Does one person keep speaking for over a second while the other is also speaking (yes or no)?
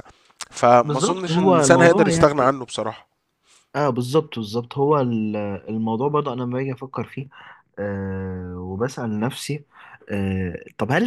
yes